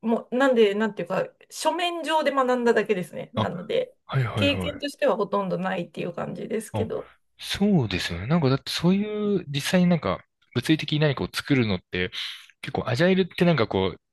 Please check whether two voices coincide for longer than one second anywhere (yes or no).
no